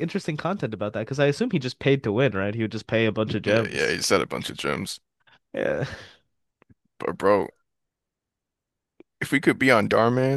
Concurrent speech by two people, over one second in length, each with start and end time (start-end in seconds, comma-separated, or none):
none